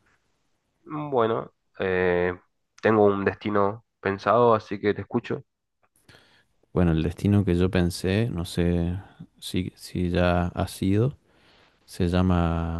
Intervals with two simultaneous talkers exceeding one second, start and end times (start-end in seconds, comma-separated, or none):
none